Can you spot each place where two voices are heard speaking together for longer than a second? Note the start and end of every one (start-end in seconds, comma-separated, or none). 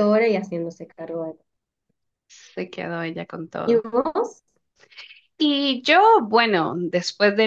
none